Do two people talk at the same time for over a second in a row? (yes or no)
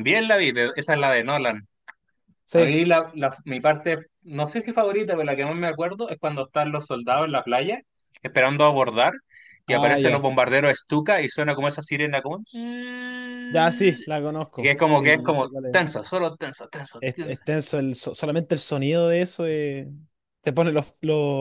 yes